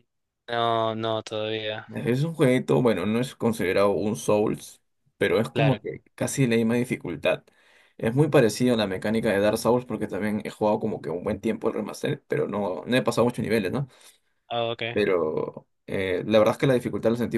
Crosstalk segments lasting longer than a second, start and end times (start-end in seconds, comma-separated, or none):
none